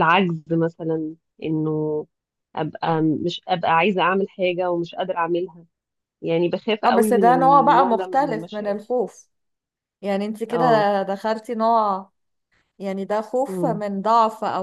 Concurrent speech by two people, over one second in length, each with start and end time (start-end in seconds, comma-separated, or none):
6.8-8.8